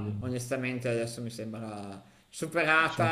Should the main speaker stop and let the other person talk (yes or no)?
no